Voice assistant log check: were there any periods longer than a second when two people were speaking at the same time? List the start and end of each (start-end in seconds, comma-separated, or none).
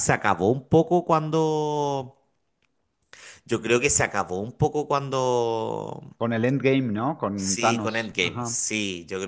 7.3-8.6